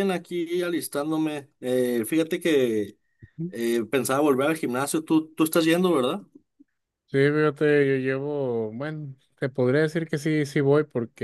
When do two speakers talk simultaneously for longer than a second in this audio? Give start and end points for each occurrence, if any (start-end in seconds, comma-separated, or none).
none